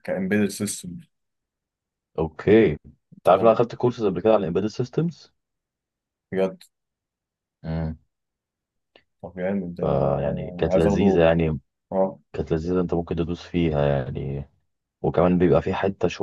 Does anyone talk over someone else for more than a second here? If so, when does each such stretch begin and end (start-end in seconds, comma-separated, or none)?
none